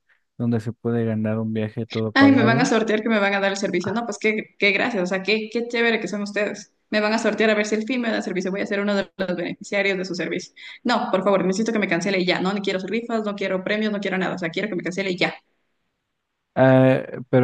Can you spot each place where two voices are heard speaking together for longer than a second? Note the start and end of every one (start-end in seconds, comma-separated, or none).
none